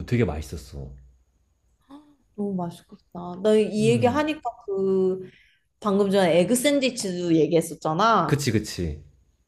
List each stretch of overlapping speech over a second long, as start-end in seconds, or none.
none